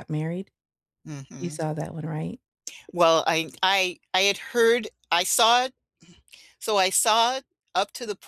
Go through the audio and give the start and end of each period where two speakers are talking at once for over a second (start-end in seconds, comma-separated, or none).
none